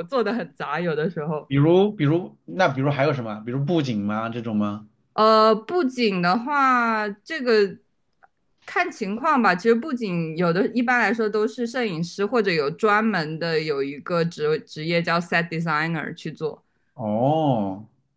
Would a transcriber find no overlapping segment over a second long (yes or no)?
yes